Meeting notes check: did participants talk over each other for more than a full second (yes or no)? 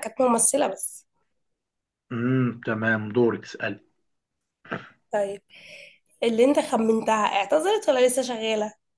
no